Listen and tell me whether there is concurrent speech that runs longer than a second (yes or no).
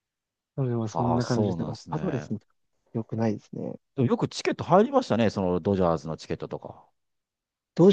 yes